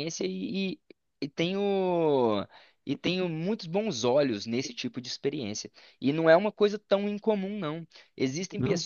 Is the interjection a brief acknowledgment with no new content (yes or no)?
yes